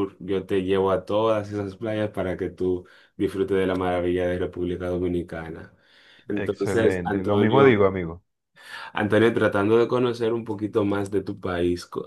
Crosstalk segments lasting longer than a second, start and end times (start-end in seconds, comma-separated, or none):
6.3-7.8